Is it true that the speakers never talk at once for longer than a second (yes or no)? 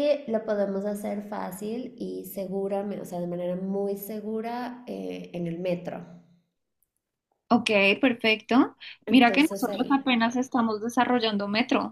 no